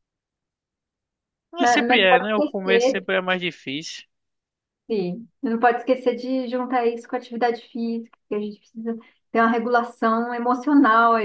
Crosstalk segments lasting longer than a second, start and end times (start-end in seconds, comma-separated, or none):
1.6-3.1